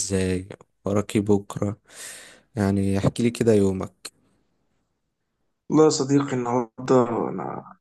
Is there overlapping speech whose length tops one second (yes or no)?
no